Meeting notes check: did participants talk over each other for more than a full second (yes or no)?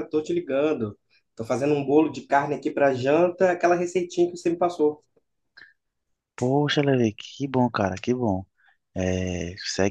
no